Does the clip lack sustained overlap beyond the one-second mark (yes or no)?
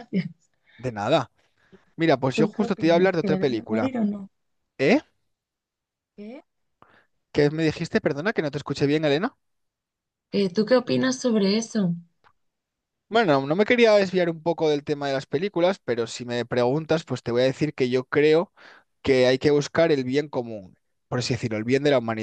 no